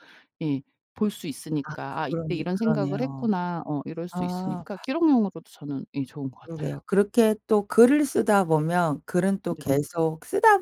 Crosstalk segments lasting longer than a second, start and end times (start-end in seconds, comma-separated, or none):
1.6-3.3